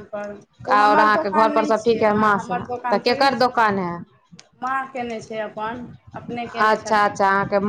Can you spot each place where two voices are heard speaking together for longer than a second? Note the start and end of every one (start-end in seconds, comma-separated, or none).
1.0-3.6